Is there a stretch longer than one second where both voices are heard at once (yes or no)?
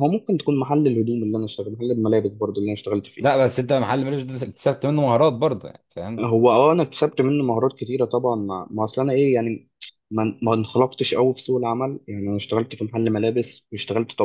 no